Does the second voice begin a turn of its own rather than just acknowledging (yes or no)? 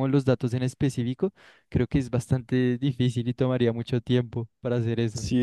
yes